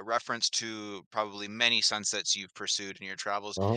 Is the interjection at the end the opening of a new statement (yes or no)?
no